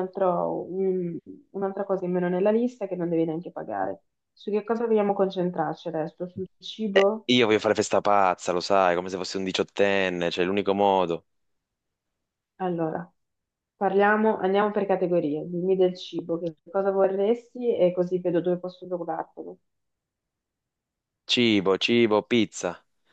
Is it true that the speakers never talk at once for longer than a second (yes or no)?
yes